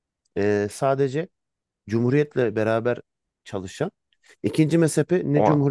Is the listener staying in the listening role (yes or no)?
yes